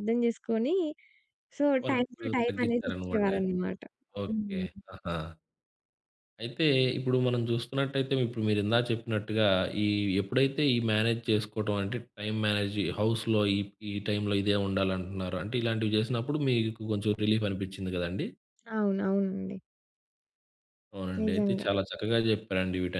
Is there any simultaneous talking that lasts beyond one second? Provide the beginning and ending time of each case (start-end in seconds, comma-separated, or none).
1.8-3.5